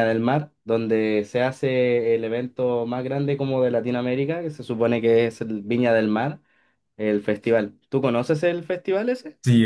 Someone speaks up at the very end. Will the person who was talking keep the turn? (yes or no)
no